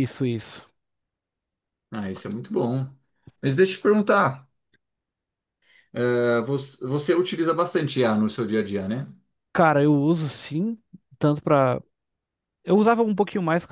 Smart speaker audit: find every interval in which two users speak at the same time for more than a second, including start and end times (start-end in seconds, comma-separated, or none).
none